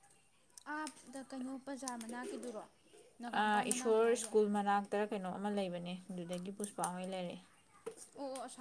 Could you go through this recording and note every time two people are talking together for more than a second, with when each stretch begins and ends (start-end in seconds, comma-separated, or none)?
none